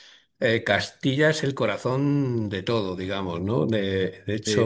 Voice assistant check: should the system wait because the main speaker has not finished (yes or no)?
no